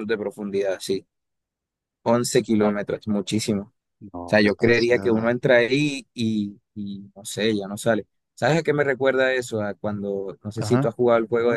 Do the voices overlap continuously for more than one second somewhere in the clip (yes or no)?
yes